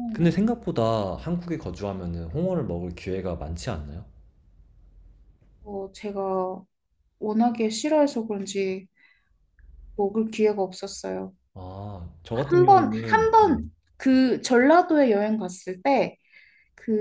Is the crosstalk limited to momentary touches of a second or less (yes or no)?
no